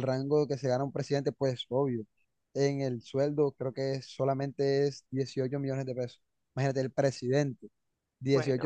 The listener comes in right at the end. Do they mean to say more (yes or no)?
no